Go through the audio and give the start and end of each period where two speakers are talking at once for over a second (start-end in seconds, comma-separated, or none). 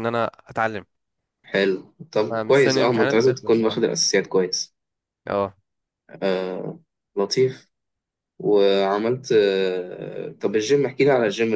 2.3-3.8